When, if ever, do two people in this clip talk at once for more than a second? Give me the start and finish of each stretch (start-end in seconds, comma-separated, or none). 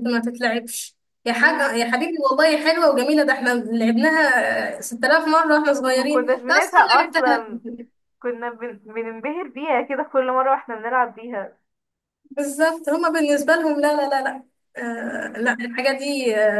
5.9-7.4